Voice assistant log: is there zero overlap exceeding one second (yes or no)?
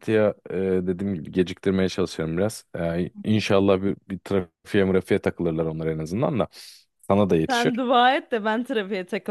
yes